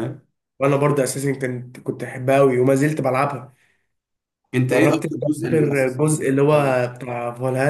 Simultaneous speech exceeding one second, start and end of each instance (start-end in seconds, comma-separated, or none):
4.7-6.4